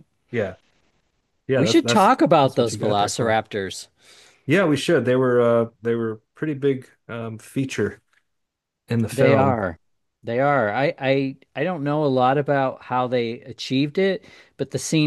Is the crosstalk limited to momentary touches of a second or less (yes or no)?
no